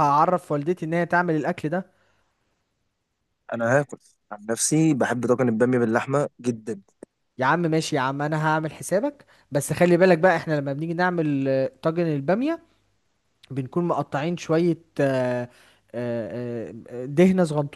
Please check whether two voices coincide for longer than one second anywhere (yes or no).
no